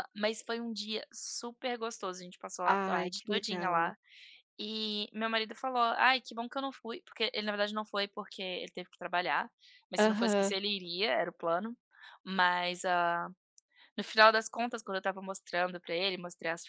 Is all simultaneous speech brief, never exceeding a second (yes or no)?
no